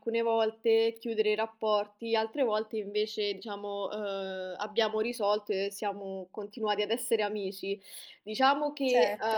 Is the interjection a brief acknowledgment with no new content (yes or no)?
yes